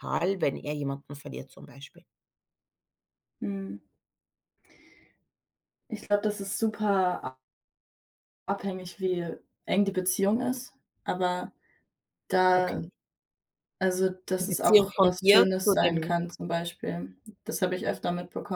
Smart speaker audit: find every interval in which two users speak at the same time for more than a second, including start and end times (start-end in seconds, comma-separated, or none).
14.4-16.1